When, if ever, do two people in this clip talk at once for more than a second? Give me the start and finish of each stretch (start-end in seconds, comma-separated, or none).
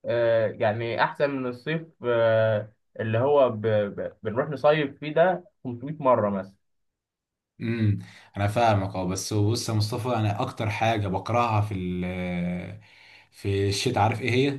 none